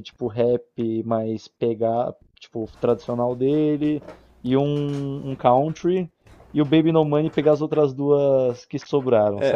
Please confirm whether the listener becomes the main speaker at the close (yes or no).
yes